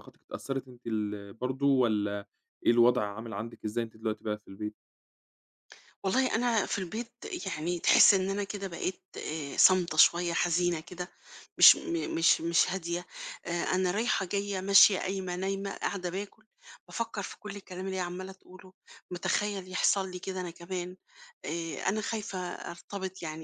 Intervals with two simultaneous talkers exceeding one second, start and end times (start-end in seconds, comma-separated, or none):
none